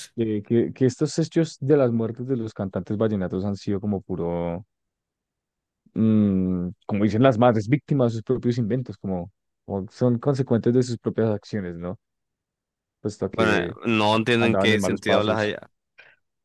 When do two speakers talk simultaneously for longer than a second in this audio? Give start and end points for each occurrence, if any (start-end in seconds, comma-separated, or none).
13.3-15.6